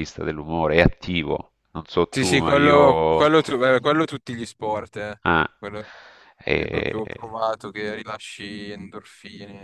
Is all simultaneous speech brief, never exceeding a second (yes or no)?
no